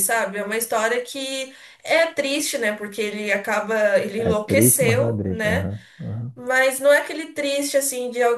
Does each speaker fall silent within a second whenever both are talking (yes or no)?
no